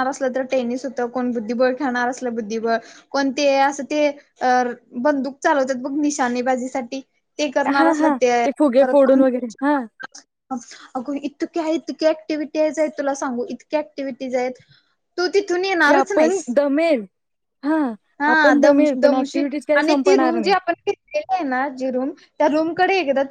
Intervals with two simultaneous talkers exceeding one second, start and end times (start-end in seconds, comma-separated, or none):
18.3-20.5